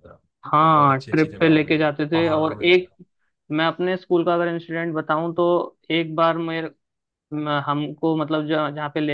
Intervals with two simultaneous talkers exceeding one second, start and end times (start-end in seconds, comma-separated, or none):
0.7-2.7